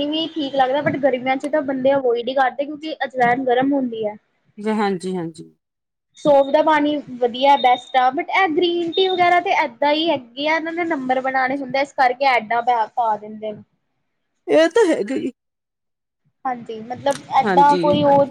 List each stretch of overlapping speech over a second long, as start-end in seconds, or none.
none